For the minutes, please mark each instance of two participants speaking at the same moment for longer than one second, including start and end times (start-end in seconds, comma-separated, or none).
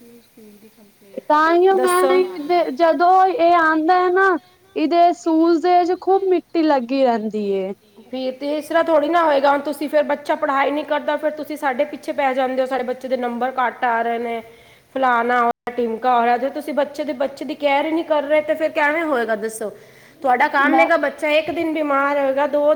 none